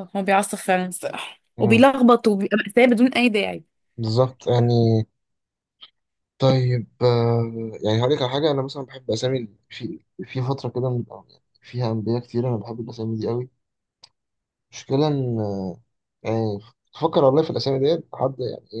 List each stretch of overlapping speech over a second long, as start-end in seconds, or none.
none